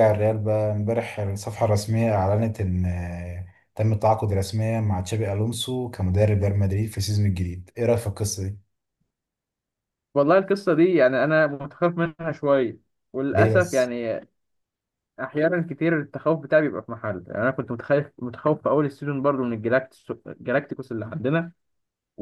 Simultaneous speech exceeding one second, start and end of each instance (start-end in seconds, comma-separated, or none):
none